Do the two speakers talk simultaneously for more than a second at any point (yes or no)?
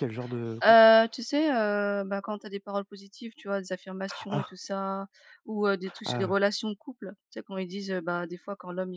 no